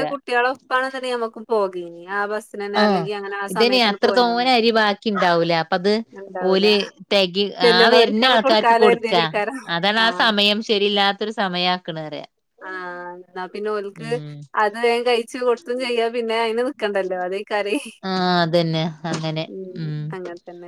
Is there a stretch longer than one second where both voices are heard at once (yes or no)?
yes